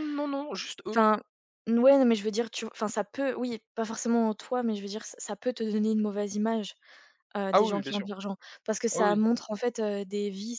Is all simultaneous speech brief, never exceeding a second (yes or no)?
yes